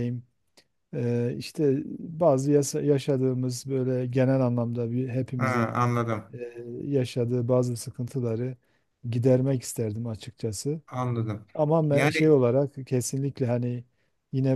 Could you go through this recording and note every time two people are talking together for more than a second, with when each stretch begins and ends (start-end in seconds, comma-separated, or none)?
none